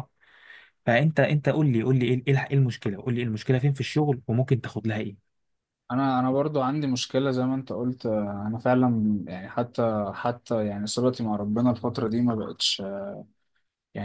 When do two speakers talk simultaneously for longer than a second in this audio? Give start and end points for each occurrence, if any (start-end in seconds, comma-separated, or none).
none